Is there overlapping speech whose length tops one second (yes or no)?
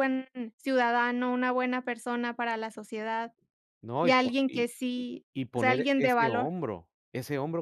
yes